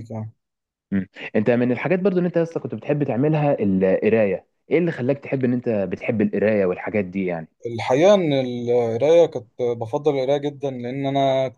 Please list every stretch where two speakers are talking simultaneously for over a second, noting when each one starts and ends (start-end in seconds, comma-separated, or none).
none